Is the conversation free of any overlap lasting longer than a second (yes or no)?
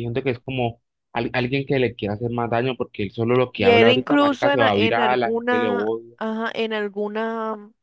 no